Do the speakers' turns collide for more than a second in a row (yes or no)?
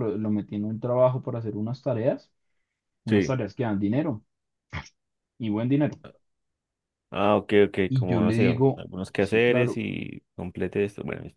yes